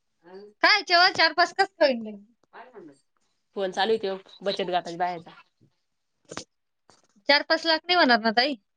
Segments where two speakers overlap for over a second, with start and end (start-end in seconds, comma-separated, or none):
none